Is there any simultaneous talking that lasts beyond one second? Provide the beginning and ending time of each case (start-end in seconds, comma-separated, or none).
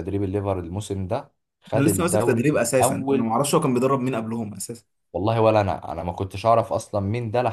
1.8-3.4